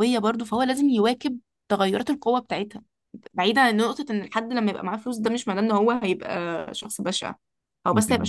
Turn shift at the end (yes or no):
no